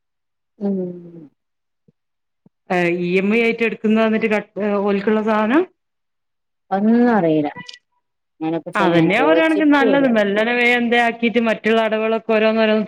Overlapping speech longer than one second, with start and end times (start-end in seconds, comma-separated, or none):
8.8-10.1